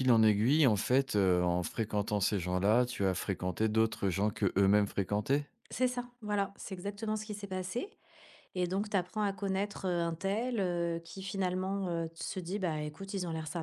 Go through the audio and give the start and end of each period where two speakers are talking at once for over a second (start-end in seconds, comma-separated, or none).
none